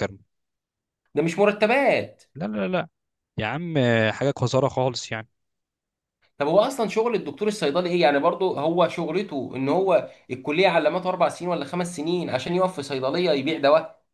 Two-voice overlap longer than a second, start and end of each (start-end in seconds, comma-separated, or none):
none